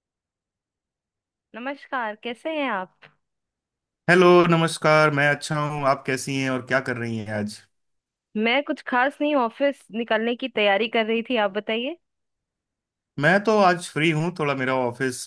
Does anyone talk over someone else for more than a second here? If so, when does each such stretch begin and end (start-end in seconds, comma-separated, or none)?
none